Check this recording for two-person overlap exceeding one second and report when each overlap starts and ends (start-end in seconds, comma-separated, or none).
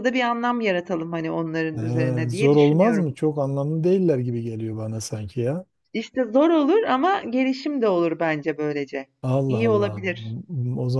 1.8-3.1